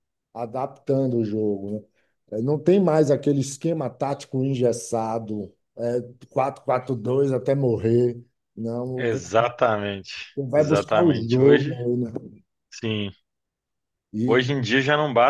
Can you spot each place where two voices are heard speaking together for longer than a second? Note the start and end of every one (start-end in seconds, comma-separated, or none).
10.6-11.8